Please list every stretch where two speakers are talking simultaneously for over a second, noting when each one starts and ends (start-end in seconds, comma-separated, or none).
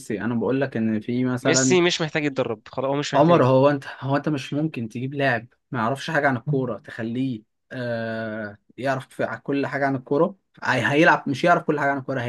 none